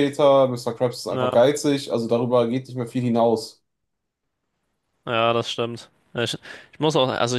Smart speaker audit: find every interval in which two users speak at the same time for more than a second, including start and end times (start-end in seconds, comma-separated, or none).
none